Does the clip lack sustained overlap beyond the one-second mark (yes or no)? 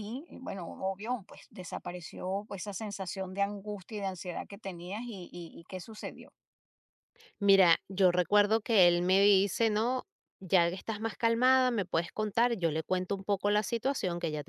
yes